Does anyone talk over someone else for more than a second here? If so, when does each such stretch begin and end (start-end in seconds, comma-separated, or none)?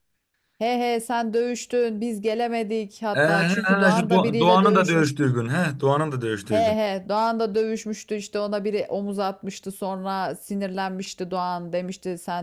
3.2-5.3